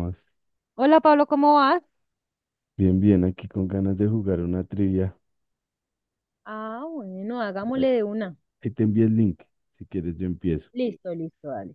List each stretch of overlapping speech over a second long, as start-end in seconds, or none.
none